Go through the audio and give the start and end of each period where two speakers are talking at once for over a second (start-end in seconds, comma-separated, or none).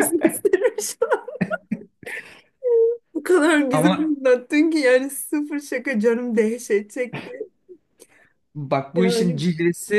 none